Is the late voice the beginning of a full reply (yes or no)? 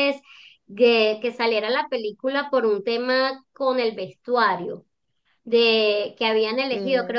no